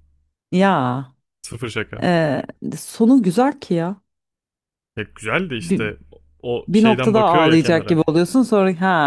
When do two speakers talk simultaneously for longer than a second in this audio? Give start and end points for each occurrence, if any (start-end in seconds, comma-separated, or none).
6.7-8.0